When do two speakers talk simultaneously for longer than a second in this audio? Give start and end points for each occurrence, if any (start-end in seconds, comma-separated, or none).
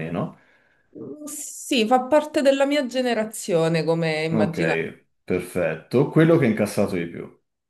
none